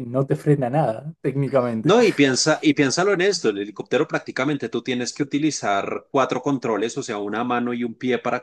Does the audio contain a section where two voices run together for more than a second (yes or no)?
no